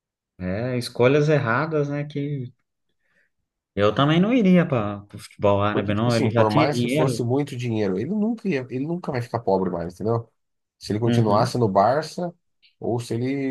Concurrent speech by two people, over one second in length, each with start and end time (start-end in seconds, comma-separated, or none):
5.7-7.1